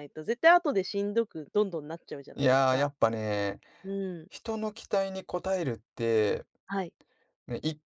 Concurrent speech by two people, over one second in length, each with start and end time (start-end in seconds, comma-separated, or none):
none